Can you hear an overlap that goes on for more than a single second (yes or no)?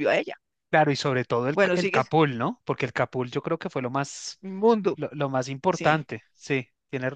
no